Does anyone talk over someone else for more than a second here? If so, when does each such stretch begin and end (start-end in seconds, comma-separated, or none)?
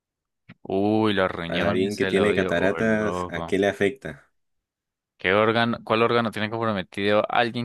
1.5-3.6